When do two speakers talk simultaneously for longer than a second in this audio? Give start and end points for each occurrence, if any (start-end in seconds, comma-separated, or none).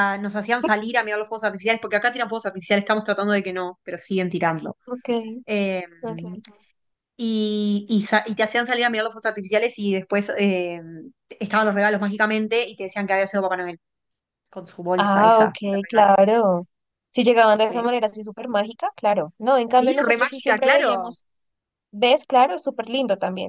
14.9-16.4, 19.6-21.2